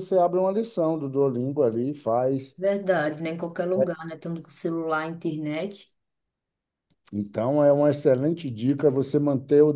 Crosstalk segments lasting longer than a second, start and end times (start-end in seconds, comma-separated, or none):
none